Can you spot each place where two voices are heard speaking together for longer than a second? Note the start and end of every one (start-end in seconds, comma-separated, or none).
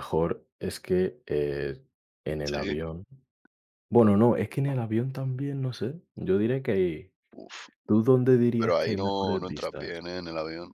8.6-10.0